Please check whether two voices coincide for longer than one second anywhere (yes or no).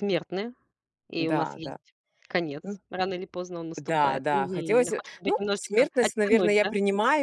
yes